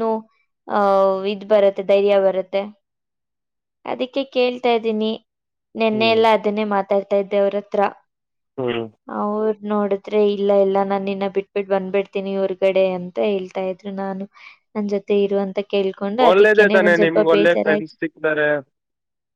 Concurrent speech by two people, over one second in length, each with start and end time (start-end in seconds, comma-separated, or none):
16.3-17.9